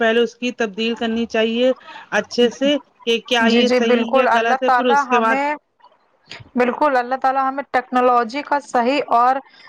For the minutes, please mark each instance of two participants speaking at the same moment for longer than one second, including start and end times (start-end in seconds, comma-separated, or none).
3.5-5.3